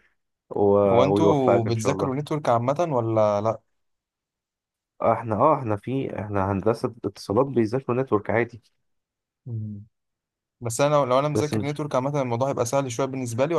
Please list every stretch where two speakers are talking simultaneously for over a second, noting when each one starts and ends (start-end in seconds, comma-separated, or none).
0.9-2.1